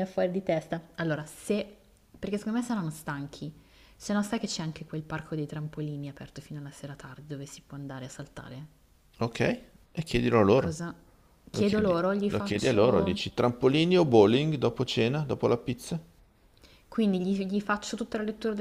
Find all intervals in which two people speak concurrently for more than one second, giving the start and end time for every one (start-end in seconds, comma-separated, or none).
11.5-13.2